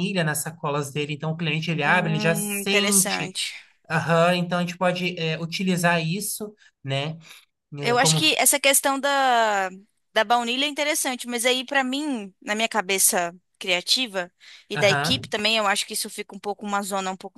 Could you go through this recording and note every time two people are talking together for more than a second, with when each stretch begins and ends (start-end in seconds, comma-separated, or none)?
1.8-3.3